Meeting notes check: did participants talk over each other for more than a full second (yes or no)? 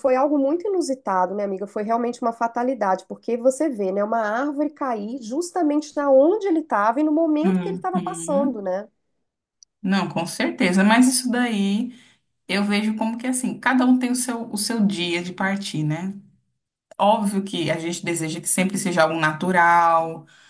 no